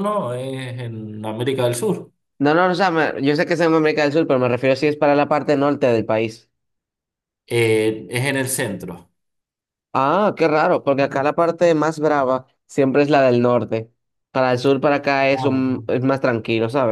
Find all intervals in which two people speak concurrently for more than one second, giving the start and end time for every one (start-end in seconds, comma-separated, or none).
none